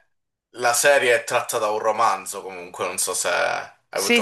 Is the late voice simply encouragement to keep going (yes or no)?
no